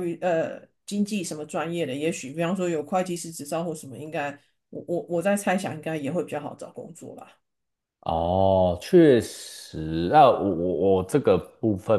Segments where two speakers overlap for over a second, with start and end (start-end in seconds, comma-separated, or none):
none